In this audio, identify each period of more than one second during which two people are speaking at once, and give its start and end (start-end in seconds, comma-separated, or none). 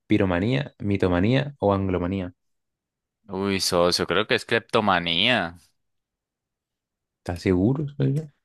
none